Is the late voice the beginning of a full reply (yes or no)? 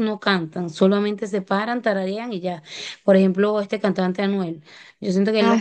no